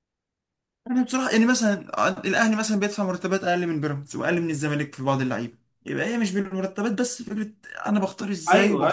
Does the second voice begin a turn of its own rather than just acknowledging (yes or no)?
yes